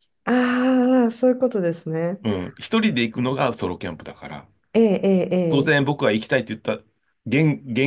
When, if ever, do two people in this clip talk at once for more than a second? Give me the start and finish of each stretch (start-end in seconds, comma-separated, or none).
none